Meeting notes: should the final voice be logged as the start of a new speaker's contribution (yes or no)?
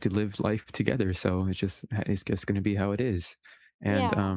no